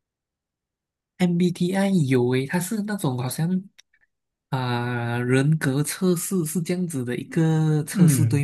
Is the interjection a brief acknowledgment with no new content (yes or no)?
no